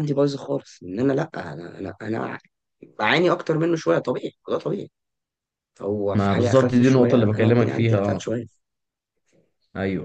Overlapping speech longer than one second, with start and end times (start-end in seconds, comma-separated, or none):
6.1-8.3